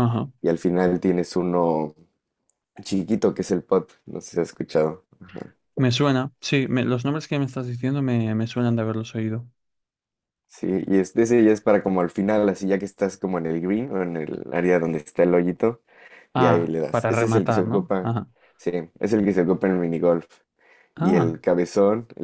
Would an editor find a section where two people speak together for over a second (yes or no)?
yes